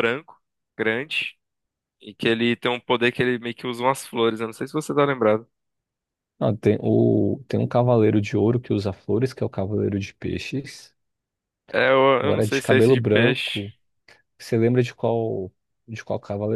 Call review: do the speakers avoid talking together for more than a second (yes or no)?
no